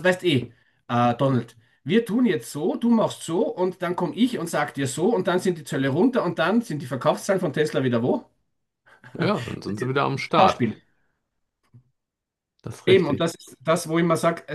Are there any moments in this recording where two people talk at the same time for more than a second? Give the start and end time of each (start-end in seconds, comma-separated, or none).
none